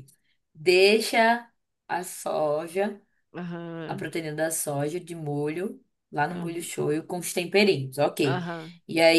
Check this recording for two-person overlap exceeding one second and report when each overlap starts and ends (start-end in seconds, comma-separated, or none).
none